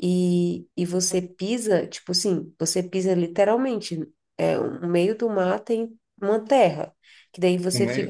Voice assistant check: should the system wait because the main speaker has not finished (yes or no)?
no